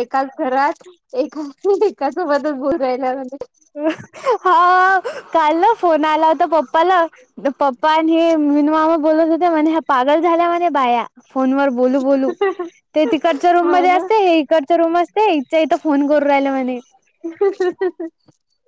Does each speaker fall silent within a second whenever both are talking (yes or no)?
yes